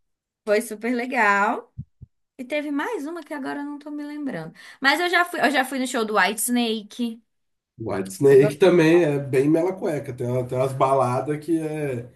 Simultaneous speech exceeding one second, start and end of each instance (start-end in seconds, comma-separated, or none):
none